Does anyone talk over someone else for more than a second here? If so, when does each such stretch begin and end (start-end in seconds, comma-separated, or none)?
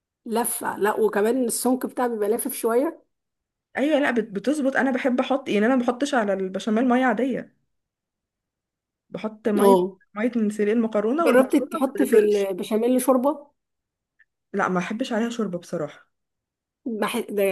11.2-12.5